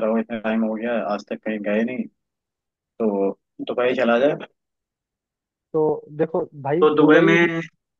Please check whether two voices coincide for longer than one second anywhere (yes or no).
no